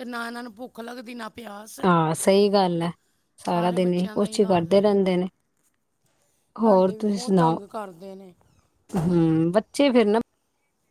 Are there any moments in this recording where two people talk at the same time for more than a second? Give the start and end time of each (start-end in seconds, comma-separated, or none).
3.5-4.8